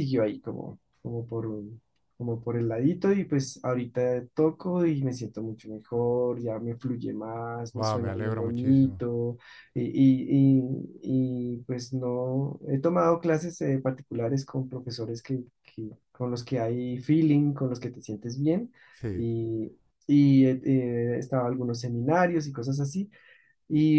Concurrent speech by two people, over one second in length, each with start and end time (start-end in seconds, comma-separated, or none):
7.7-9.0